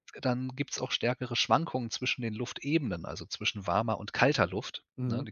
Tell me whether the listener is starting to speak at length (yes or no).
yes